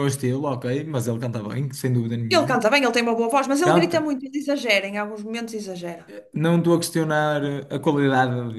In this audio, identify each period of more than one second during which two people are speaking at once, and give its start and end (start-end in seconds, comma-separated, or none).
none